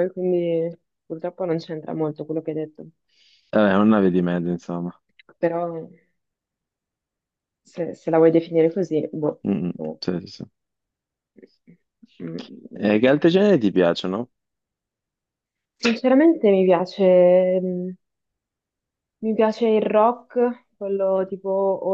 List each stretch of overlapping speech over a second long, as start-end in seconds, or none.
none